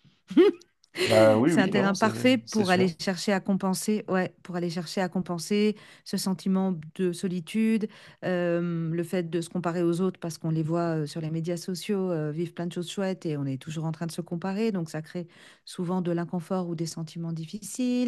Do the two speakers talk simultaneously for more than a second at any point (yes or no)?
yes